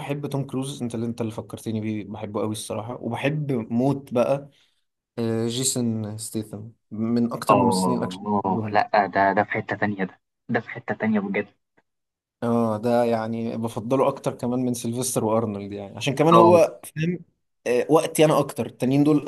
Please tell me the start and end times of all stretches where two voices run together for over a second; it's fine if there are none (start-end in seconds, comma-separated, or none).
7.5-8.8